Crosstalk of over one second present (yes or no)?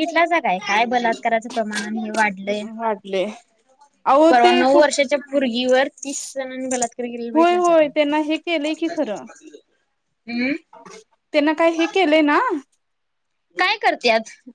yes